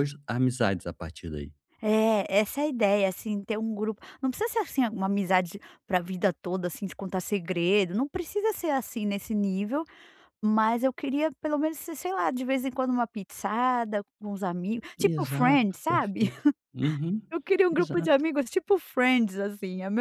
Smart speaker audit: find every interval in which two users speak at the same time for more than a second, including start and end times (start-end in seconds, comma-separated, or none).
15.0-16.3